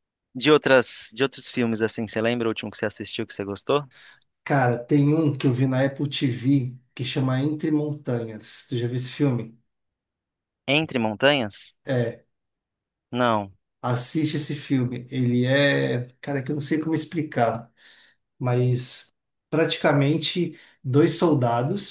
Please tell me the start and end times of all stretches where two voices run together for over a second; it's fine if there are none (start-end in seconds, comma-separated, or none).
none